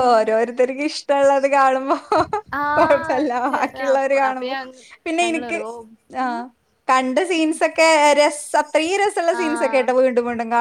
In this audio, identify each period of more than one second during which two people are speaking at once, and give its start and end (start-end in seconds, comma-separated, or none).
2.8-4.5